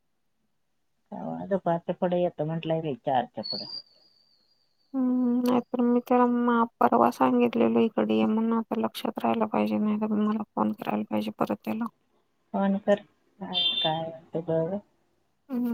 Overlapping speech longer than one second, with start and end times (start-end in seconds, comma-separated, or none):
none